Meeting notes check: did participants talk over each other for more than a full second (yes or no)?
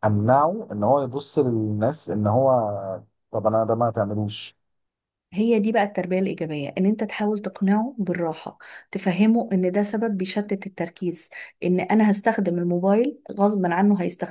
no